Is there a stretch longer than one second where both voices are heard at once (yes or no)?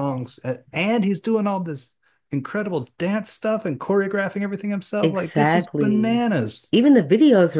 yes